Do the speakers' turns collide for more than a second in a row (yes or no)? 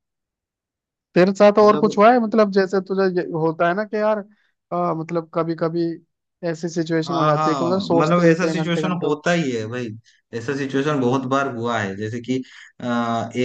yes